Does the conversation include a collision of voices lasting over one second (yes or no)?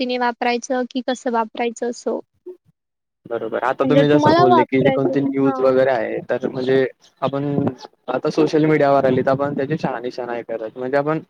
yes